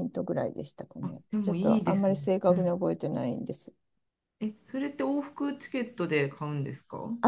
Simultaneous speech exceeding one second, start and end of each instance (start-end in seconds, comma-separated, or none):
1.0-2.7